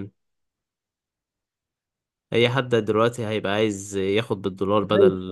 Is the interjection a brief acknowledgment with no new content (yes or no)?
yes